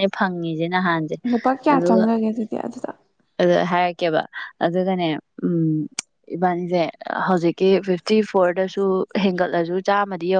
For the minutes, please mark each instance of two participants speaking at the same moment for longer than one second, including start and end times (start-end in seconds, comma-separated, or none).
none